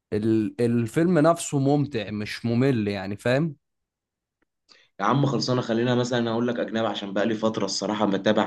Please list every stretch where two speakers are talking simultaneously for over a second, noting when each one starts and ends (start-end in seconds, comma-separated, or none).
none